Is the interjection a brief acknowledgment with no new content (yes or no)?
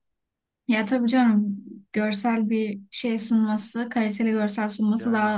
yes